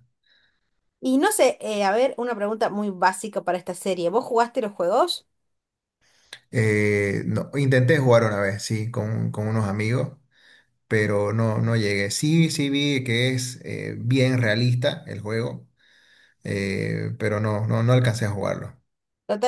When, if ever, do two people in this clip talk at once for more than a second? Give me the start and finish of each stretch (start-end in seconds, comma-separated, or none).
none